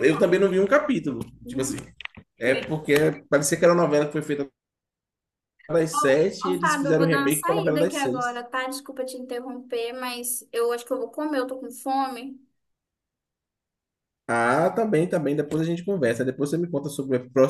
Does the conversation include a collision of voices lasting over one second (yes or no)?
yes